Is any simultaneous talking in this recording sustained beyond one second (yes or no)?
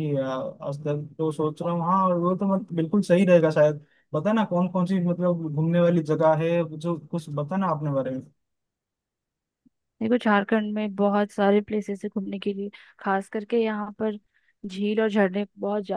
no